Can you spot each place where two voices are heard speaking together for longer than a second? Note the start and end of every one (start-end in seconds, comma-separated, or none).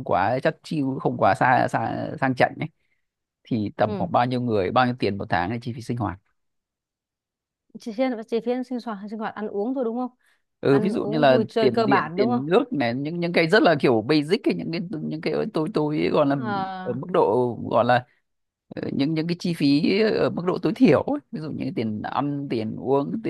10.7-12.4